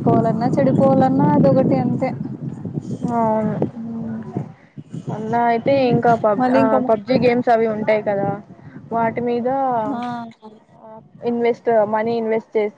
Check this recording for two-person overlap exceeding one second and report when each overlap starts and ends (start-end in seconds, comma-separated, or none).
none